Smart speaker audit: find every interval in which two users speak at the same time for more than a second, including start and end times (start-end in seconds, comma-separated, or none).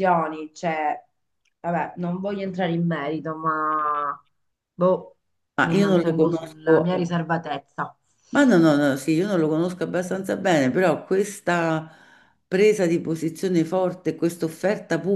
5.6-6.9